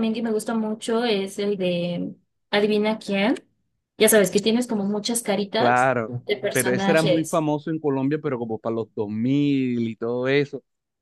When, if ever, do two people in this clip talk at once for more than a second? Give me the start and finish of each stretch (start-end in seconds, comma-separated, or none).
5.6-7.5